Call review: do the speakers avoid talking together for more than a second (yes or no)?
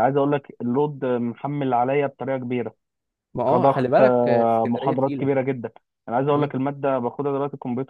no